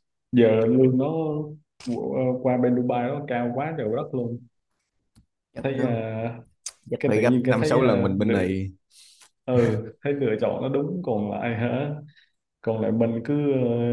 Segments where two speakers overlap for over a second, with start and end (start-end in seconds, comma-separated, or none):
7.0-8.4